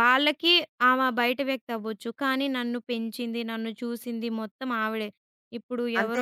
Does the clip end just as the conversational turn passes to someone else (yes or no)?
no